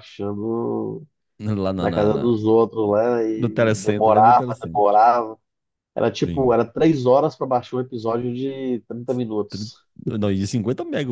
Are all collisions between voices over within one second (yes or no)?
no